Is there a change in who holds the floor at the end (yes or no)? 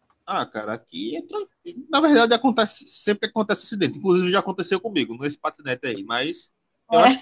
no